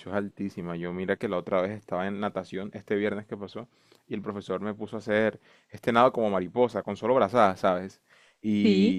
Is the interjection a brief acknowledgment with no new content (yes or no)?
yes